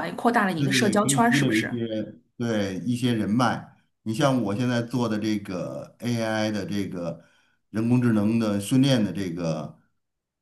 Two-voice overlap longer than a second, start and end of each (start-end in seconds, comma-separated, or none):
0.6-1.8